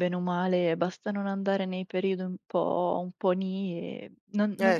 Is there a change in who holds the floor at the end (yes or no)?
no